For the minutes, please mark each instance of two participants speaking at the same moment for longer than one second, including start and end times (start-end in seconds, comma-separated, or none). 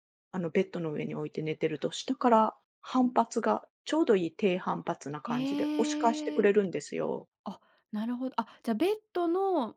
5.2-6.5